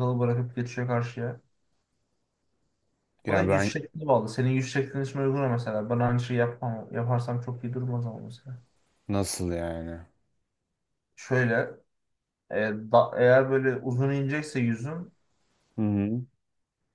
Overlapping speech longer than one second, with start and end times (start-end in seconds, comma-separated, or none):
none